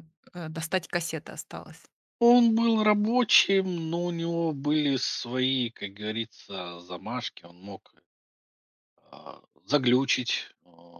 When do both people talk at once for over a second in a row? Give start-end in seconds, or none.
none